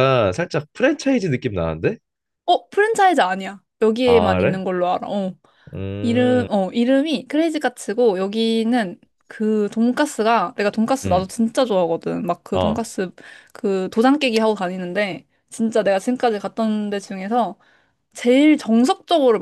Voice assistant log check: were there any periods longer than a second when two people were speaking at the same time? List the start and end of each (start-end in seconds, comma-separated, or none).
none